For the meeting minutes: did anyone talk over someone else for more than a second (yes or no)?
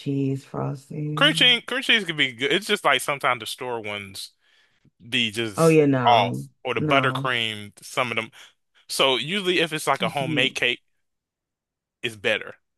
yes